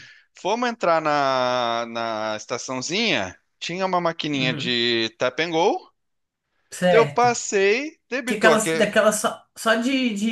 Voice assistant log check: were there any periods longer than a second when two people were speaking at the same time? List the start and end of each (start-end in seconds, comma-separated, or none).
none